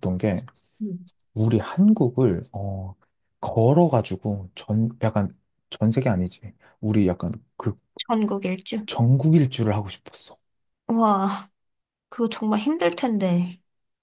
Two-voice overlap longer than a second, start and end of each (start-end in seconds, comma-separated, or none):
none